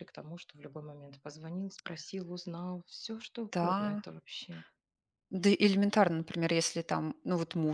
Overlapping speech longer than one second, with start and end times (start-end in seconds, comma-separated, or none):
none